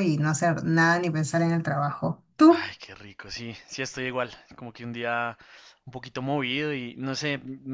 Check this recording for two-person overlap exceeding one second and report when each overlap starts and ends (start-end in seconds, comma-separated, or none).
none